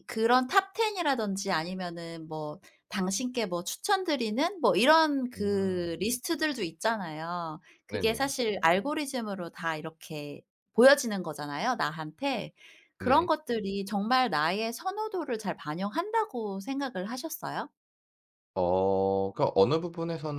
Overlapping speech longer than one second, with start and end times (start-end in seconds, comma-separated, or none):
none